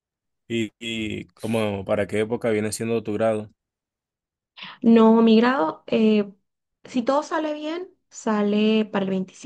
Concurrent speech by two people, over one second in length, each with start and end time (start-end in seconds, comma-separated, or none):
none